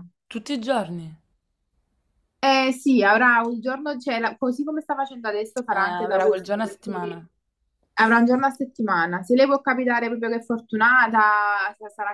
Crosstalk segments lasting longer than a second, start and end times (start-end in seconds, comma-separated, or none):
5.7-7.2